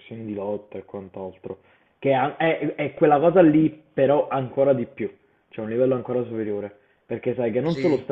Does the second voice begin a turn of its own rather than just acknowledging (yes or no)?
no